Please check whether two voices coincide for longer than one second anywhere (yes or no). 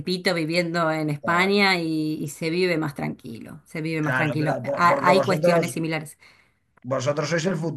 yes